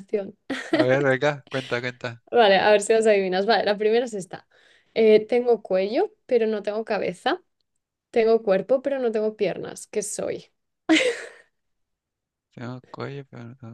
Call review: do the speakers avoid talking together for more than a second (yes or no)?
yes